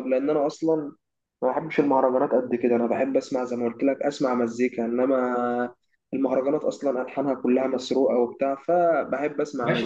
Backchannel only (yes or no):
no